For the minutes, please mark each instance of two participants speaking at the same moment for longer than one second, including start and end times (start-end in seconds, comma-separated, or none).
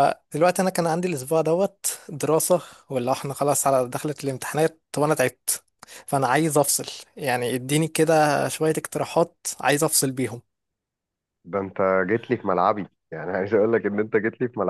none